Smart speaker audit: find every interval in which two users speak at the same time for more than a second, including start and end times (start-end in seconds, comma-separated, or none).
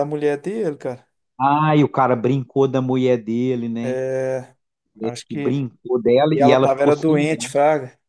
6.3-7.5